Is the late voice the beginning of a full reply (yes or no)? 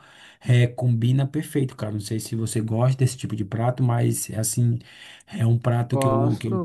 yes